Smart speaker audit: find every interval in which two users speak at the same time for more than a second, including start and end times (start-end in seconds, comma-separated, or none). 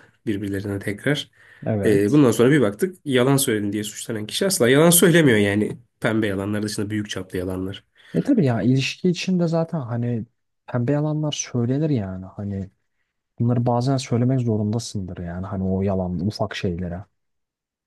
none